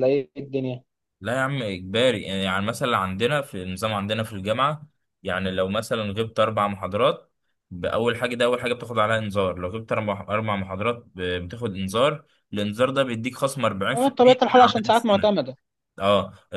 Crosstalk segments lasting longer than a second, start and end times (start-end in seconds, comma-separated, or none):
13.9-15.3